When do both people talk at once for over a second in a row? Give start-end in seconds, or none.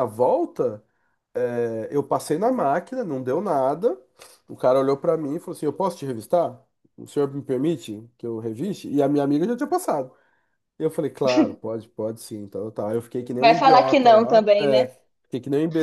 13.4-14.9